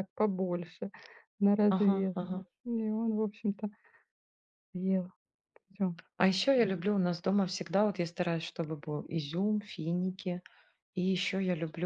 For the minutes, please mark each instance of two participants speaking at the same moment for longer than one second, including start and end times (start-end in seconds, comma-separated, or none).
none